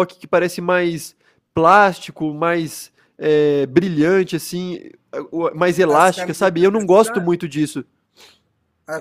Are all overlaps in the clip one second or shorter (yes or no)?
no